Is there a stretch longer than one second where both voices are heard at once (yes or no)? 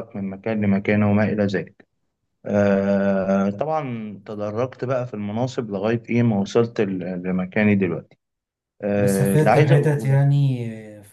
yes